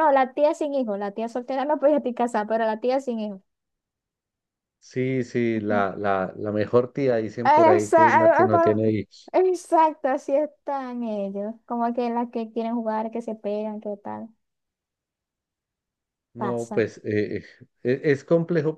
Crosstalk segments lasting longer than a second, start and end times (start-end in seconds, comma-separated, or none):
7.4-8.8